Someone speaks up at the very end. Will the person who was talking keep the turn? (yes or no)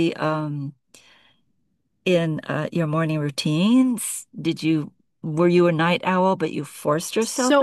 no